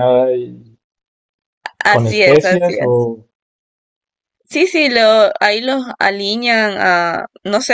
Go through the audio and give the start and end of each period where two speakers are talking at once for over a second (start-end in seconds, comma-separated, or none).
1.9-3.1